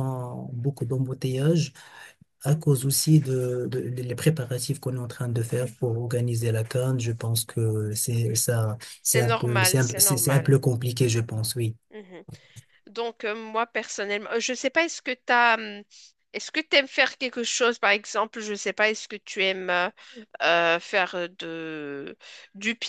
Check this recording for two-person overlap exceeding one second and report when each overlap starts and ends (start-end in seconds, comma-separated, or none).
9.0-10.6